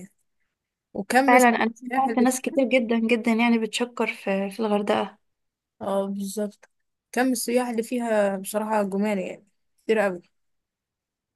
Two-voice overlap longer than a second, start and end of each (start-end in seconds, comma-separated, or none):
1.3-2.6